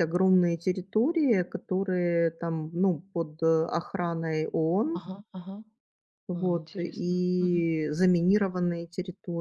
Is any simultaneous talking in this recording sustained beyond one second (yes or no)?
yes